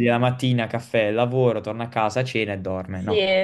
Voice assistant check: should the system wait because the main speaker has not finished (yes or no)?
no